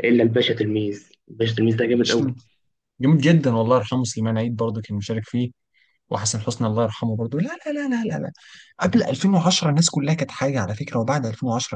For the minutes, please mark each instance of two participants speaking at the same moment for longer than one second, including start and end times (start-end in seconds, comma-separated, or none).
none